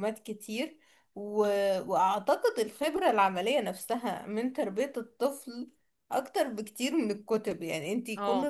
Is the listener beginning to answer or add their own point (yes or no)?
no